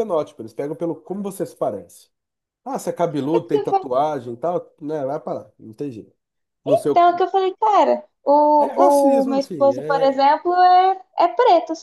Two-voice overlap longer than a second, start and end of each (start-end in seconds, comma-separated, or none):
8.6-10.2